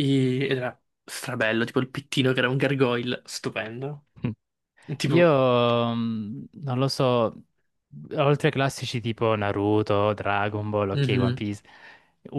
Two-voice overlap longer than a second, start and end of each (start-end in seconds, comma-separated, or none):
none